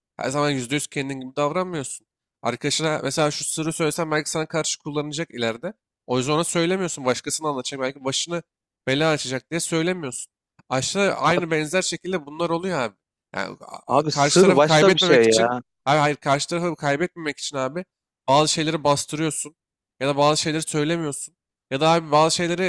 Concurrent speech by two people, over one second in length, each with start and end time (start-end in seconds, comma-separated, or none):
13.9-15.6